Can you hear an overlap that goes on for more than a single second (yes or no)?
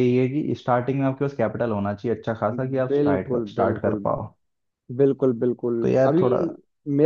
yes